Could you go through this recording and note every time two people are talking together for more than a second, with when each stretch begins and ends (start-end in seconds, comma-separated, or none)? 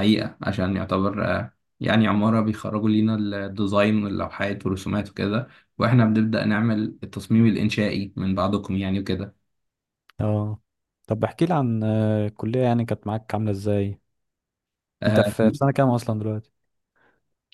none